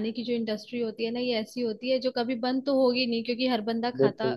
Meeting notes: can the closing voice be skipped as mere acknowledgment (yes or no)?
yes